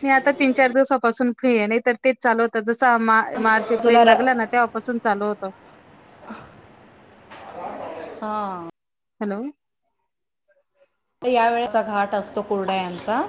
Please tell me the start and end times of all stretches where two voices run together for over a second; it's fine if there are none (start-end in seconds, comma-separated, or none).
none